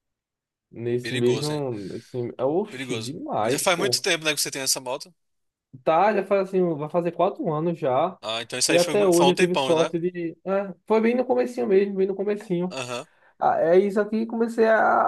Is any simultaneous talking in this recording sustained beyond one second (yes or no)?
yes